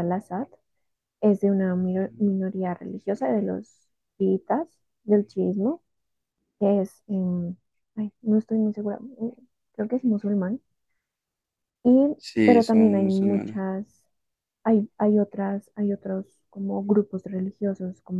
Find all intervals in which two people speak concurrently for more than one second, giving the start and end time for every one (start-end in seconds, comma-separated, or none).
12.2-13.6